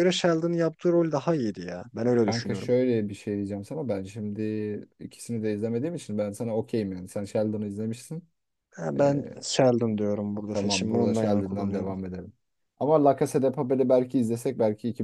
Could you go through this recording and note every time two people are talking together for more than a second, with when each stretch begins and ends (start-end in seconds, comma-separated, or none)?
10.5-11.9